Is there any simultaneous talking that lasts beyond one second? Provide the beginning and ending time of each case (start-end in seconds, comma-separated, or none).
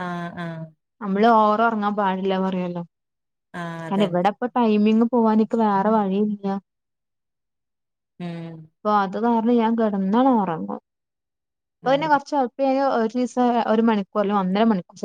none